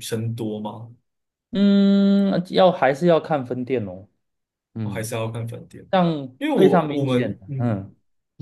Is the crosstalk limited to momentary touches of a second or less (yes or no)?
no